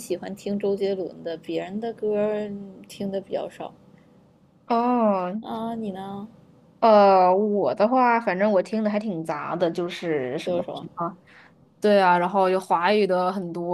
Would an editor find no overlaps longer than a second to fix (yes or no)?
yes